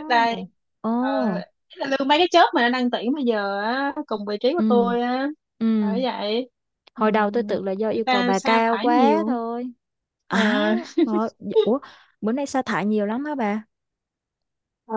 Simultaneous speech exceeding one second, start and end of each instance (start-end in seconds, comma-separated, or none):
7.0-9.4